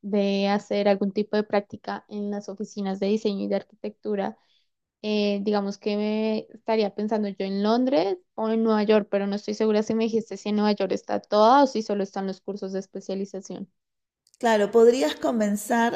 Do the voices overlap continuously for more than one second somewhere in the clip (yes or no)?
no